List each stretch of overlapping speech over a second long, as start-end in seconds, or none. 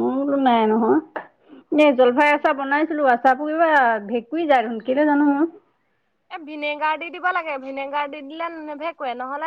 none